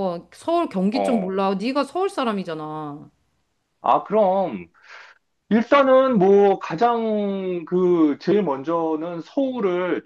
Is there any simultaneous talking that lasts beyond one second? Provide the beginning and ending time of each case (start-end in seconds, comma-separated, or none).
none